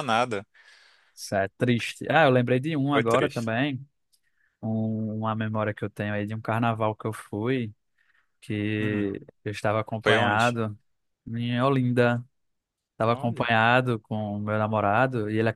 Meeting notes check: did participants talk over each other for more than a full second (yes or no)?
no